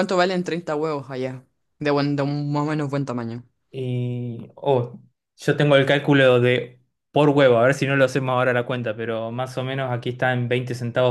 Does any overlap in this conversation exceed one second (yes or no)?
no